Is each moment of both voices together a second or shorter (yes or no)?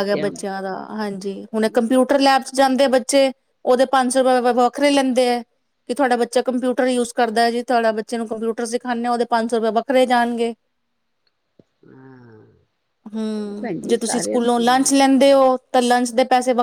no